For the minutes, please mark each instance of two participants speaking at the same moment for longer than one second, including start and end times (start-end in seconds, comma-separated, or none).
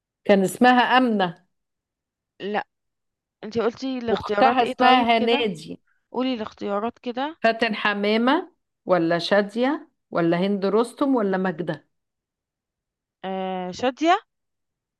4.1-5.5